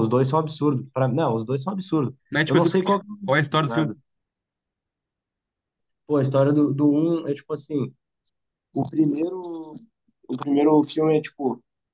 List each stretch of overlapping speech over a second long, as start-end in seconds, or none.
2.3-4.0